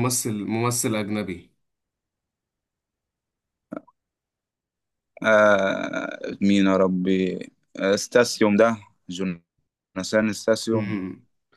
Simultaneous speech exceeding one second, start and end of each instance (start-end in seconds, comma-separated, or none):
none